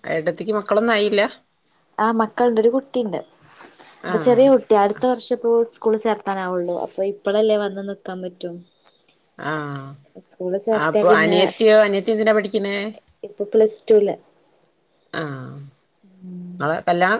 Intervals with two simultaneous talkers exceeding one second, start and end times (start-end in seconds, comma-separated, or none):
none